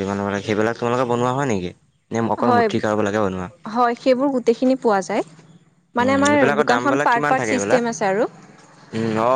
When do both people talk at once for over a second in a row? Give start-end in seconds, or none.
6.0-7.8